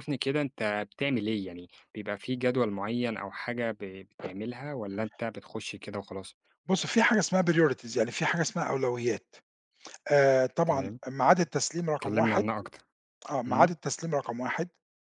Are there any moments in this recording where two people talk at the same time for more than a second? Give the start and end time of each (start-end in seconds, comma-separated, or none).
none